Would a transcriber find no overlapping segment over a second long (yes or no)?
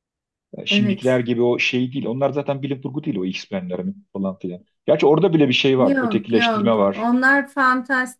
no